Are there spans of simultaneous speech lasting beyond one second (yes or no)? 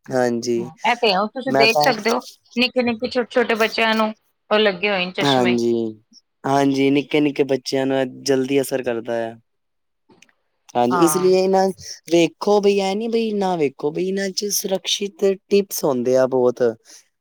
no